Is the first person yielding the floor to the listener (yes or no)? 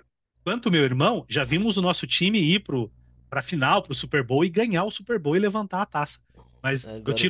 no